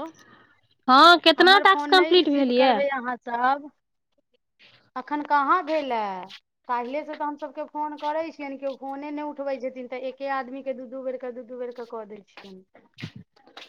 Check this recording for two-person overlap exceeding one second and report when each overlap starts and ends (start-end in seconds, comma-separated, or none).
none